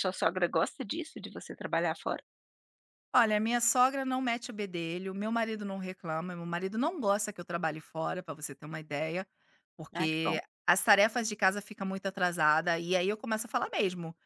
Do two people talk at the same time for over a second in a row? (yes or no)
no